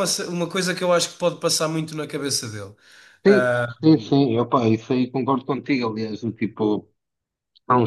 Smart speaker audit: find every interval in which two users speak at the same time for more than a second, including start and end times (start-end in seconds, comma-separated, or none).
none